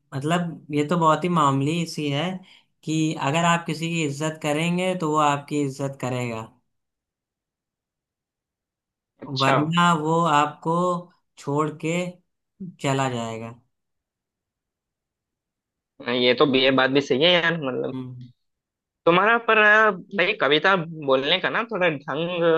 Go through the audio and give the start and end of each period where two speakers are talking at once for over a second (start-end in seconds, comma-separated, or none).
none